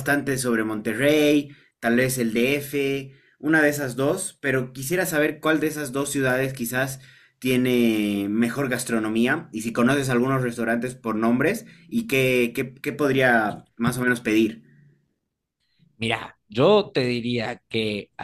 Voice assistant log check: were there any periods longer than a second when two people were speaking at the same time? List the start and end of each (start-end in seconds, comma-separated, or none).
none